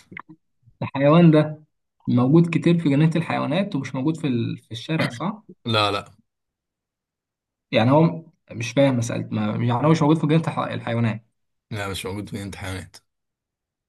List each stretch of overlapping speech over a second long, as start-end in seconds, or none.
none